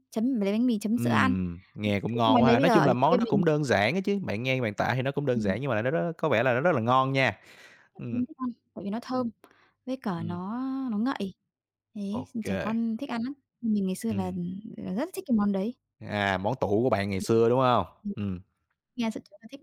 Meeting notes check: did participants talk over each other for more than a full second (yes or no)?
yes